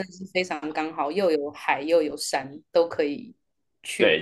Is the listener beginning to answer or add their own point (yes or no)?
yes